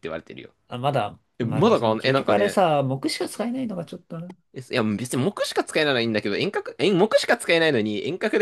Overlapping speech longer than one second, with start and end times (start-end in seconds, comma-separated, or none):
1.4-2.6